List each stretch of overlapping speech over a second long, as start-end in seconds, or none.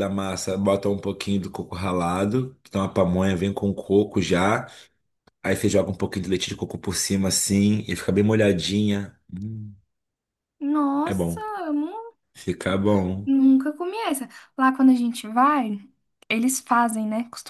none